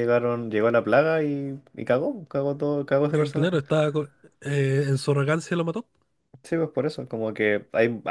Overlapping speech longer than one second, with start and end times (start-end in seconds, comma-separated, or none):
none